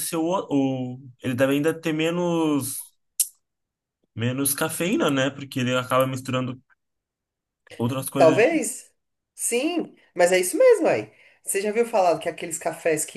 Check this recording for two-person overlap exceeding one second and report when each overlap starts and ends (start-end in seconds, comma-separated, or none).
none